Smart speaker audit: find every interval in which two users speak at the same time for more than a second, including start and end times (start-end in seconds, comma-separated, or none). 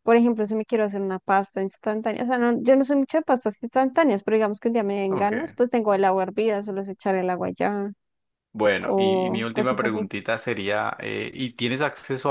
8.8-10.1